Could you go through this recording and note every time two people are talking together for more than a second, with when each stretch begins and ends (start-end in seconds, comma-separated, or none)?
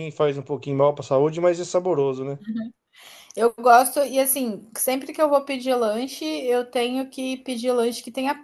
none